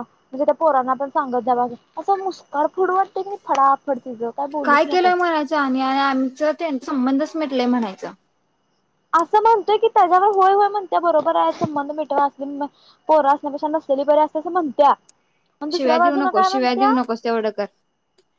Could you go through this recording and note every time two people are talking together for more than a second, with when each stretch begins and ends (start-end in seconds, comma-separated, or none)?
15.7-16.9